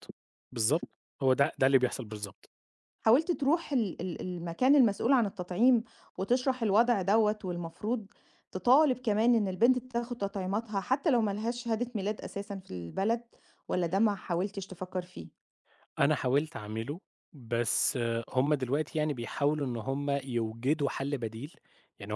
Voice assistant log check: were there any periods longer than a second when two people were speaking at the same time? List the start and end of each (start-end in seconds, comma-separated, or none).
none